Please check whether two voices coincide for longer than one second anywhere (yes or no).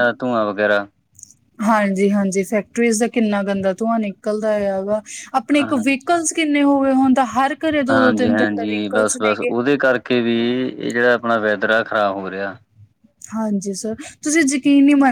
yes